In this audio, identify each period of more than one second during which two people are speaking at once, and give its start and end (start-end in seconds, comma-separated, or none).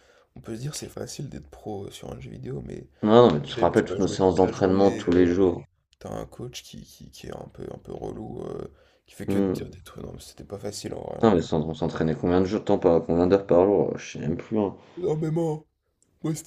3.5-5.3